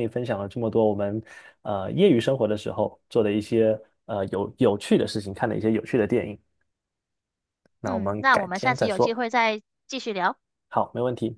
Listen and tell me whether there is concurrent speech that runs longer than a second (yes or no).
yes